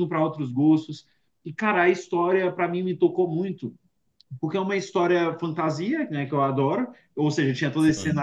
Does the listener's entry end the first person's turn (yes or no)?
no